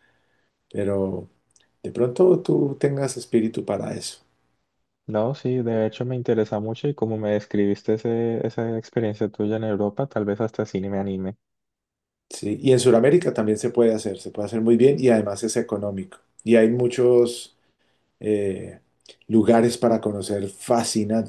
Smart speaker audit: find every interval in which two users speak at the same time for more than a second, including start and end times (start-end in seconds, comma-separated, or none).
none